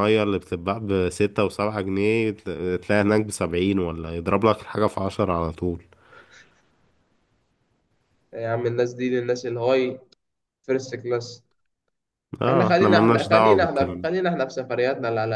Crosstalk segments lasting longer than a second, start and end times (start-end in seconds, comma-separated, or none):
12.5-14.1